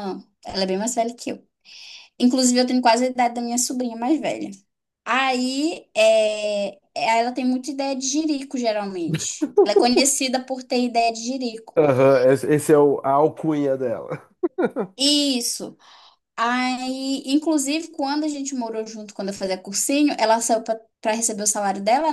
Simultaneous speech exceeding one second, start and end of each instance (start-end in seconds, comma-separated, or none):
none